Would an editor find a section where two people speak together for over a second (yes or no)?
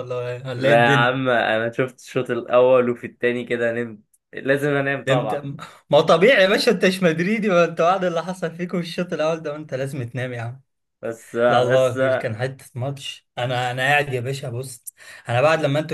no